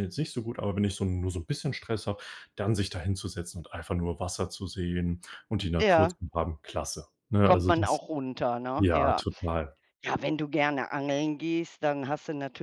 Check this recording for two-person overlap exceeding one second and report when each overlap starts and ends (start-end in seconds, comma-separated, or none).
none